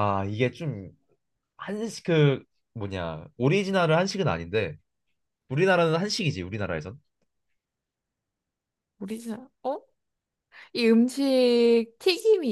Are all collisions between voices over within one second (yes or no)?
yes